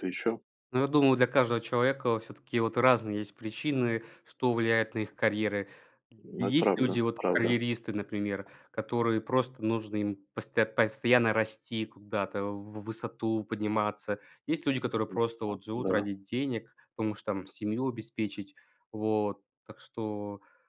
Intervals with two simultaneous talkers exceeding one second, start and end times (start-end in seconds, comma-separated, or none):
6.4-7.6